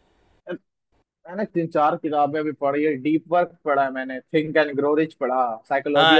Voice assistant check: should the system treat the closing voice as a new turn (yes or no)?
yes